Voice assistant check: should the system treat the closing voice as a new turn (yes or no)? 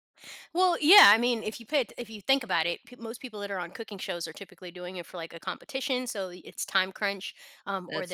no